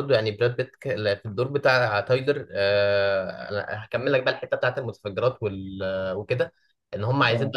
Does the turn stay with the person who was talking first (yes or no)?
yes